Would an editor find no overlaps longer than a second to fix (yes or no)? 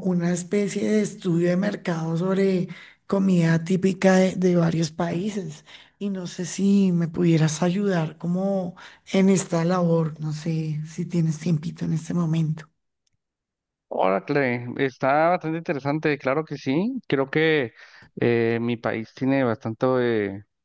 yes